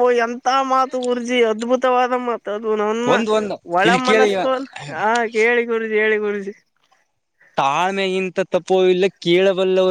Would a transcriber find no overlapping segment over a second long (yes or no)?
yes